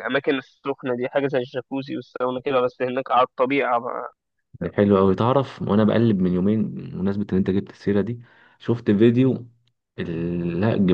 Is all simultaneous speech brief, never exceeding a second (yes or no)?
yes